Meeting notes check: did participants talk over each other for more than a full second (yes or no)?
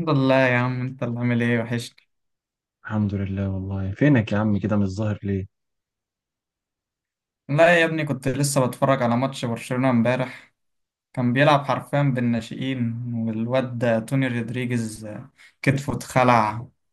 no